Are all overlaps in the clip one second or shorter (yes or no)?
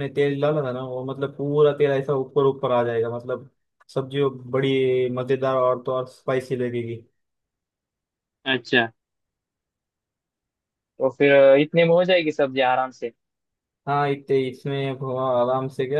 yes